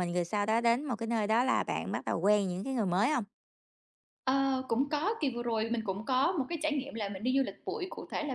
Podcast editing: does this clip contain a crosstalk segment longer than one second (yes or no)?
no